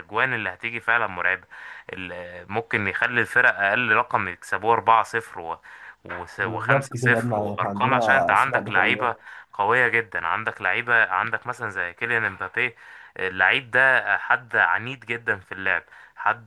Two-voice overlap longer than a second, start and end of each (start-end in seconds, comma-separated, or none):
6.4-9.1